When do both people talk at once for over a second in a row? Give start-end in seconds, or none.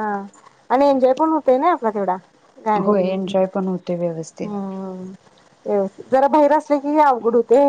none